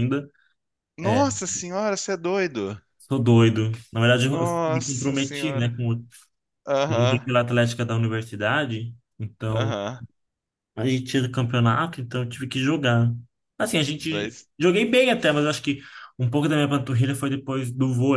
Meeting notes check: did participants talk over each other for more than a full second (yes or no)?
yes